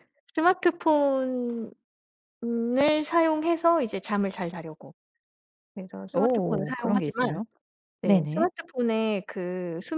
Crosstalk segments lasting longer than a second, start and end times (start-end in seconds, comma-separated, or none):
6.1-7.4